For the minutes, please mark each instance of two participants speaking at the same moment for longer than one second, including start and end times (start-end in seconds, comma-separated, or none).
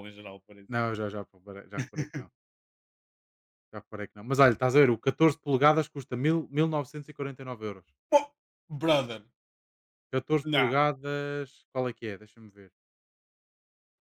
none